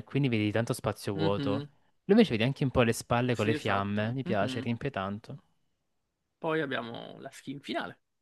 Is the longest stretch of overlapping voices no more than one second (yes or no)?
no